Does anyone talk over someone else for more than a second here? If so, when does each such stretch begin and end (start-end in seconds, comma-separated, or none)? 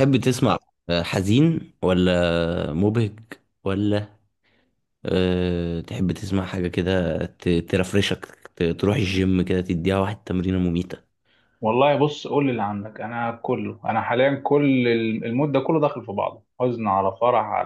none